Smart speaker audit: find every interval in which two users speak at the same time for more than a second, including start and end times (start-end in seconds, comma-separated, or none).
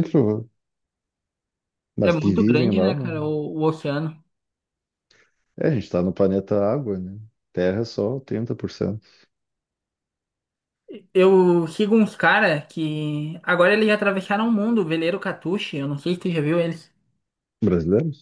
2.0-3.2